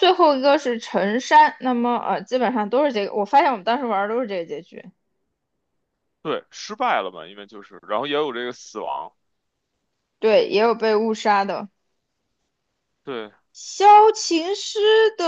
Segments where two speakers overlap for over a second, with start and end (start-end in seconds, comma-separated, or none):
none